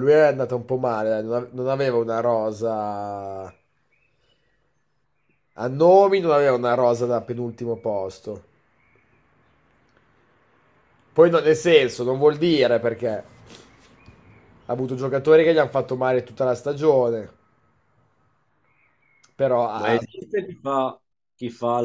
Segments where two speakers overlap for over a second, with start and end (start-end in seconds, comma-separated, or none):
none